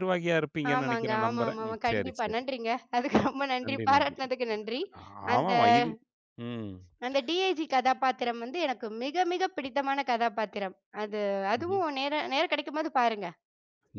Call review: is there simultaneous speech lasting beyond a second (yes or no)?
yes